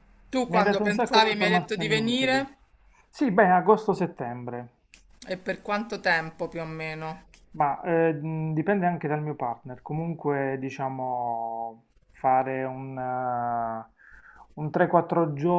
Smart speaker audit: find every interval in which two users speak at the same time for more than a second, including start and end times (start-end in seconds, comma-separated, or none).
0.5-2.5